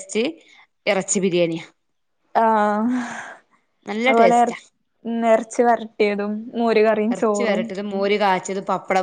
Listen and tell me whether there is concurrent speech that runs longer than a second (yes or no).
no